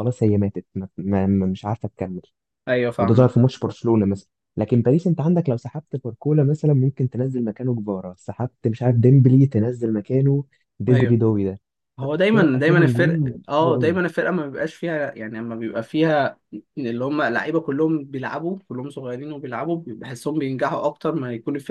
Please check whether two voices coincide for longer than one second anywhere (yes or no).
yes